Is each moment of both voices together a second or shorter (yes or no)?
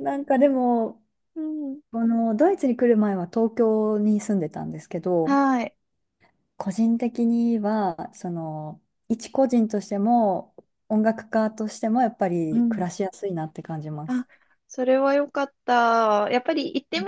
yes